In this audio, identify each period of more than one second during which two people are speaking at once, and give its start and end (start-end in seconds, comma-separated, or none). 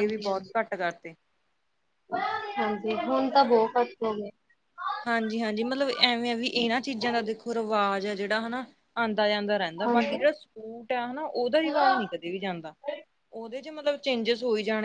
none